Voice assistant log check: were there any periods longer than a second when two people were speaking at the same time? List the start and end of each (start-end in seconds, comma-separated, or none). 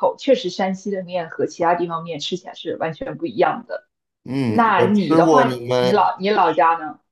4.4-6.1